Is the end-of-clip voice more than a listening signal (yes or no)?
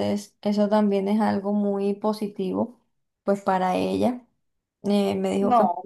no